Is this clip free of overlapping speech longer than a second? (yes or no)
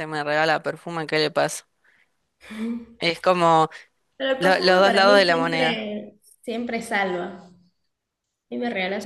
no